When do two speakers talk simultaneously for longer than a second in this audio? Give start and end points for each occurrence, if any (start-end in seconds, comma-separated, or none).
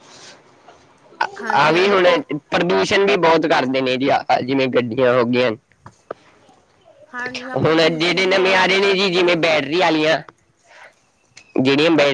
7.5-9.3